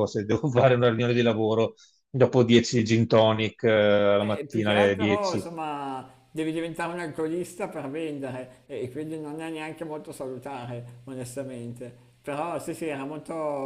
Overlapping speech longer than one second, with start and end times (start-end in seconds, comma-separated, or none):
4.2-5.5